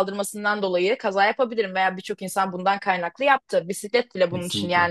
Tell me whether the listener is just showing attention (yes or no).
yes